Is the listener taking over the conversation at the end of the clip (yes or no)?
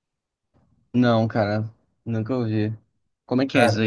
yes